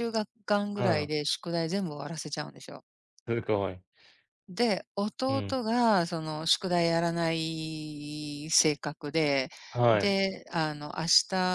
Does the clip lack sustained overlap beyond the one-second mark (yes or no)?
yes